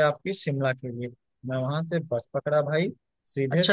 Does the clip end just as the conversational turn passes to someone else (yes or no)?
yes